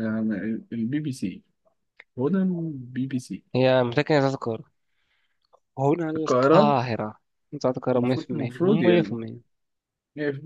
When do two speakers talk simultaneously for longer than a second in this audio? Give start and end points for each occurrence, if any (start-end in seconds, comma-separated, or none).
8.0-9.2